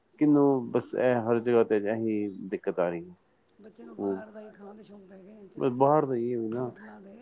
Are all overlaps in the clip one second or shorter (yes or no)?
yes